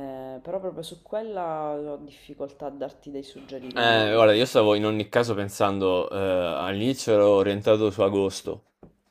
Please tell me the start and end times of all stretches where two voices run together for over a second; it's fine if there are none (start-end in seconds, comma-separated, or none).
none